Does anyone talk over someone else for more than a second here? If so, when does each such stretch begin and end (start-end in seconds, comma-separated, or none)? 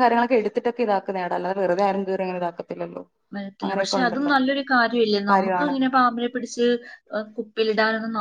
none